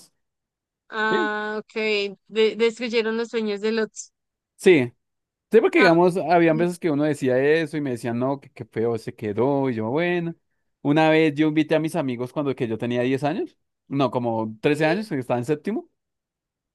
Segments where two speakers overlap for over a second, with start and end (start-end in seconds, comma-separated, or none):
none